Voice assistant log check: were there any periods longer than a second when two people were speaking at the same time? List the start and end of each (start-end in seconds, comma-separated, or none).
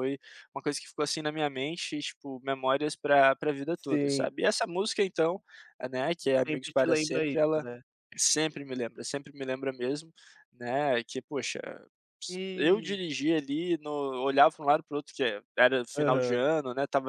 6.4-7.7